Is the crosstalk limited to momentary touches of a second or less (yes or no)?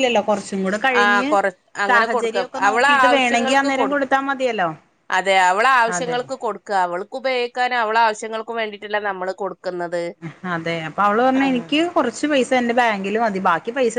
no